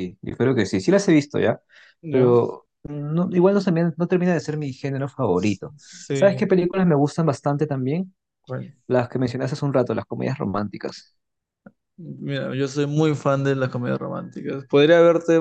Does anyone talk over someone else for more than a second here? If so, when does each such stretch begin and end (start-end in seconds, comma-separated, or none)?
none